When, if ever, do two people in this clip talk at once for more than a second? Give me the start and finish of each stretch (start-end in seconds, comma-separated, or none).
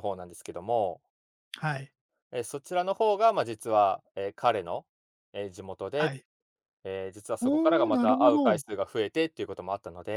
7.4-8.6